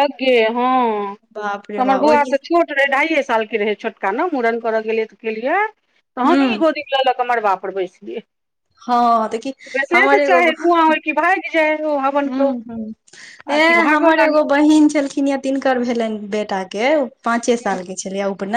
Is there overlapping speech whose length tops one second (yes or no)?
no